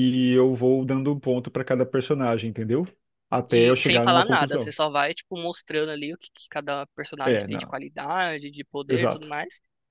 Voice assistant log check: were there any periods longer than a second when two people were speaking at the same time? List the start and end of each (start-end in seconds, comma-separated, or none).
3.5-4.7